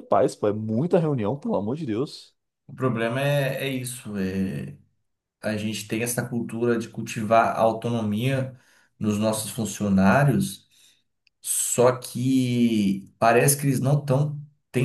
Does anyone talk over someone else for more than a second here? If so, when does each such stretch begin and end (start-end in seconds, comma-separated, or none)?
none